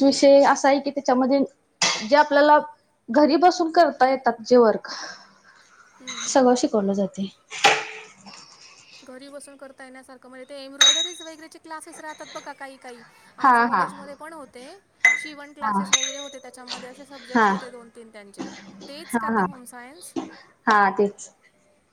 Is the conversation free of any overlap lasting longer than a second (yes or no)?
yes